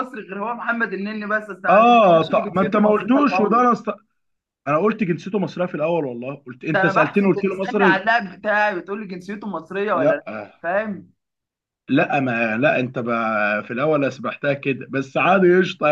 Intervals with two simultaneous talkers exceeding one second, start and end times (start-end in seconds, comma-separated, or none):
1.7-3.6, 6.7-8.1